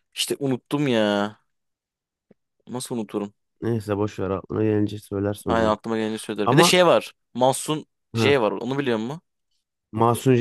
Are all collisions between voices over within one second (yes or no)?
yes